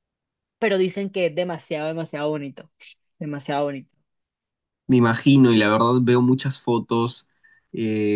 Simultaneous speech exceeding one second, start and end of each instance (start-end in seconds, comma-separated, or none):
none